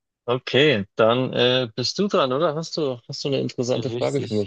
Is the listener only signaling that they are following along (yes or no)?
no